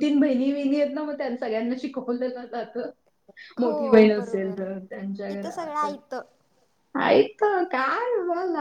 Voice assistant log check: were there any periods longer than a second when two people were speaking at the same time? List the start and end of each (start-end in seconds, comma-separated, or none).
3.6-5.9